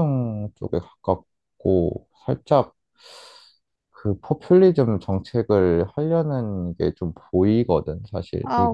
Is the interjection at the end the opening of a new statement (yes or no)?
yes